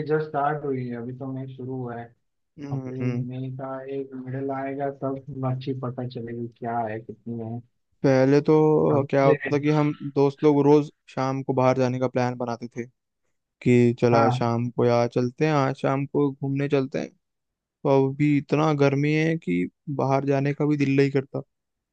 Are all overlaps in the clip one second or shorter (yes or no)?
yes